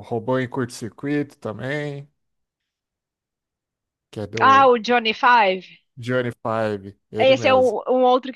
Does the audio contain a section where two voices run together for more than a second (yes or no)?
no